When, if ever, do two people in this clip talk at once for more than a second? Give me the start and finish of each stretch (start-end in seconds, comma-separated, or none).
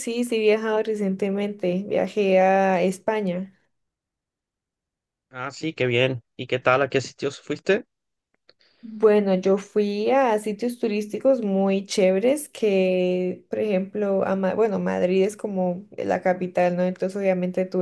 none